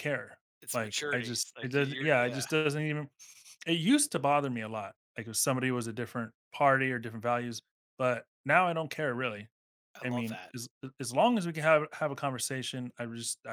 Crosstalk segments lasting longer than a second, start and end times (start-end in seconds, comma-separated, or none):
0.6-2.5